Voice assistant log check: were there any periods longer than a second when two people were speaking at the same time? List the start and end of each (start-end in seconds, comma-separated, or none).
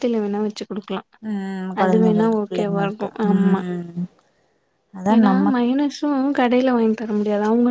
1.8-3.6